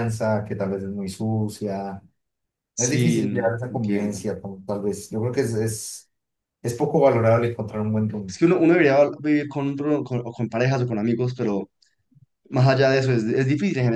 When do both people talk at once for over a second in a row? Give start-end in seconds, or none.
2.8-4.2